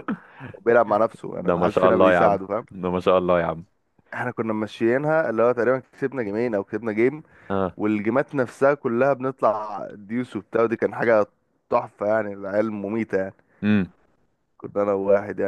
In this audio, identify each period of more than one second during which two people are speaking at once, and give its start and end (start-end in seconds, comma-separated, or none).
1.3-2.7